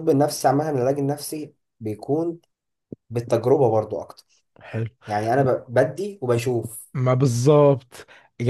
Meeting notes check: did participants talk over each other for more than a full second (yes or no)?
no